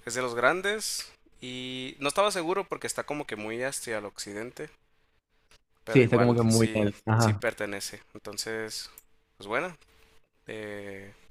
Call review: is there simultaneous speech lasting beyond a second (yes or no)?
yes